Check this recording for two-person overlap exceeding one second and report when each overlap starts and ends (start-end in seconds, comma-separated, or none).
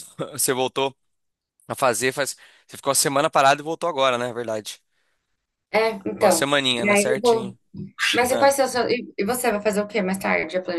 6.1-7.5